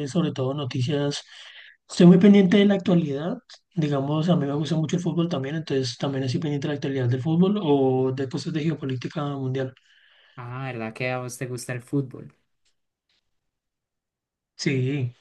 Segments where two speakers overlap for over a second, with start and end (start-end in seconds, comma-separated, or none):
none